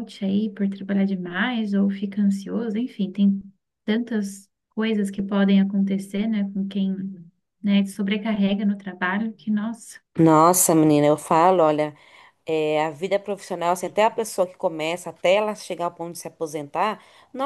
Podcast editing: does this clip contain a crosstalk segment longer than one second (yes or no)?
no